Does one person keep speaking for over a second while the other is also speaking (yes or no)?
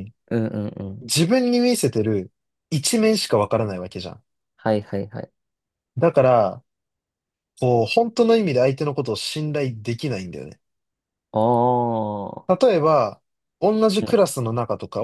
no